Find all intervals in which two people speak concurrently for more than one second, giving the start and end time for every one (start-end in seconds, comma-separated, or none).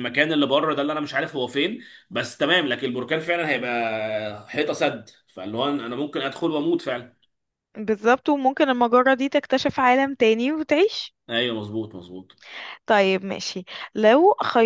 none